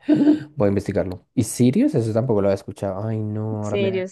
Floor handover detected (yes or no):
yes